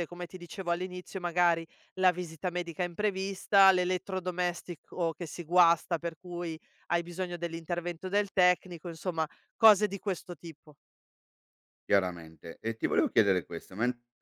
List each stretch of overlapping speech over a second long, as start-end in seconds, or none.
none